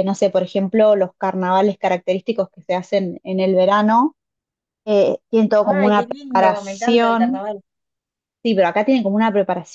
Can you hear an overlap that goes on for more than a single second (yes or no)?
yes